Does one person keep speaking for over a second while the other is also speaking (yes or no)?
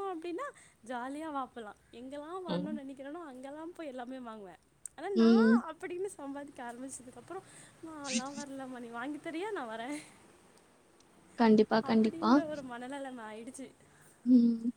no